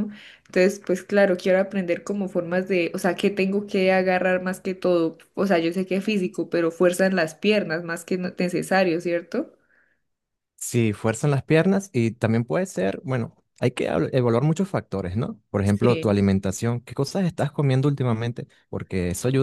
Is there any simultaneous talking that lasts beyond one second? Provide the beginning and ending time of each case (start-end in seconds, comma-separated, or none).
none